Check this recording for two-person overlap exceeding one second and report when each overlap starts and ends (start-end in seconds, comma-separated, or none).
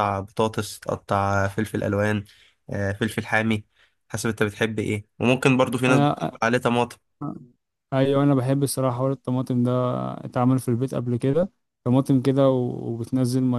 none